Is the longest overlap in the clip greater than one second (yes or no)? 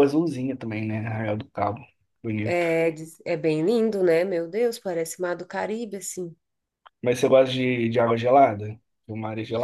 no